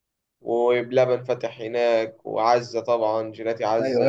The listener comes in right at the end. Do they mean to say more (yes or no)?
yes